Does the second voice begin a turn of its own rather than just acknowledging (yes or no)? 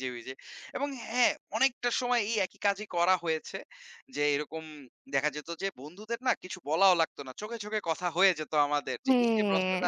no